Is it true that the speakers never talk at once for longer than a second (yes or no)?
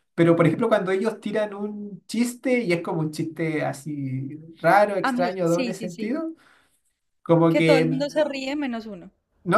no